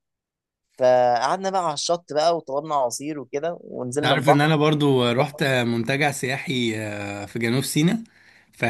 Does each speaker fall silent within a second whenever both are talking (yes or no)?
yes